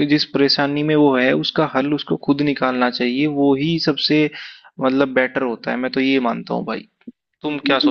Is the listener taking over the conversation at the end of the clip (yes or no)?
yes